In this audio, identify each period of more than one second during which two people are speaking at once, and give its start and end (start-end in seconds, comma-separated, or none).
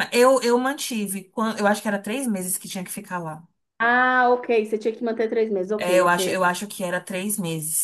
none